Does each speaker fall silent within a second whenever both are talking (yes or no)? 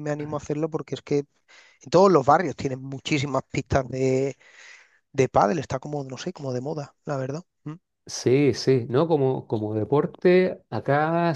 yes